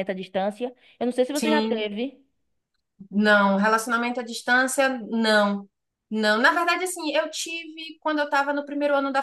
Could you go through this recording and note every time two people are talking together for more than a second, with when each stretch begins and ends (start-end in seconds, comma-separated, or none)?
none